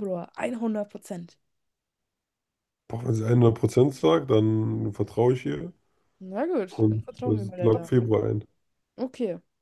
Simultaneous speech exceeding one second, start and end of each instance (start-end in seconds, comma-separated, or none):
6.7-8.1